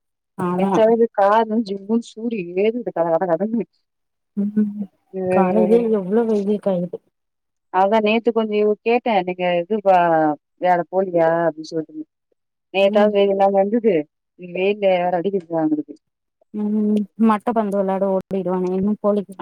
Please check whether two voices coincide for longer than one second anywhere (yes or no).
no